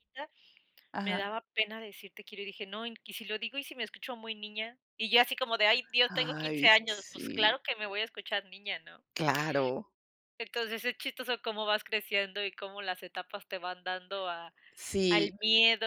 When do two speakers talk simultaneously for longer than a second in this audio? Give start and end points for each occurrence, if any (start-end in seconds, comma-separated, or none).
6.1-7.6